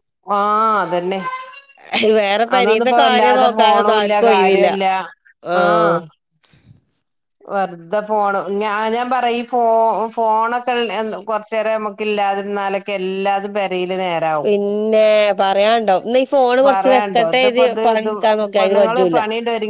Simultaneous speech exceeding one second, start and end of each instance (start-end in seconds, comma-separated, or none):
2.6-4.7